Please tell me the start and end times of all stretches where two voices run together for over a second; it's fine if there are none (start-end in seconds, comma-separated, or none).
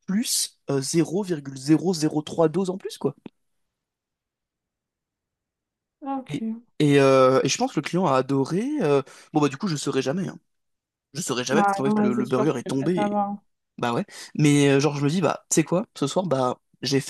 11.5-13.2